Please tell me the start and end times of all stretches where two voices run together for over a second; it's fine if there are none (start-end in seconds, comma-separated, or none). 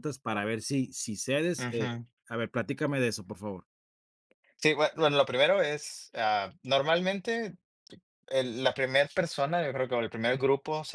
none